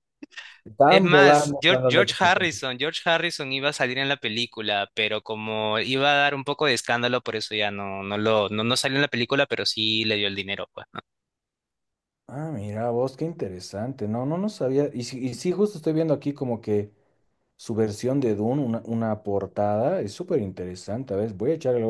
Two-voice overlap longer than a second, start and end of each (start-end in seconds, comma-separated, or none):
0.9-2.6